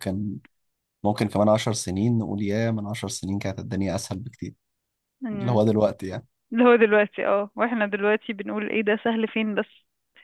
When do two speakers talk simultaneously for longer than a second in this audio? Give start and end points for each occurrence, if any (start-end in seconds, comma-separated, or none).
none